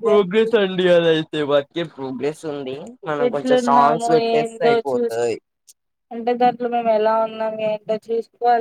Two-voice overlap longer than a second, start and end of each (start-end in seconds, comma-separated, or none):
3.7-5.3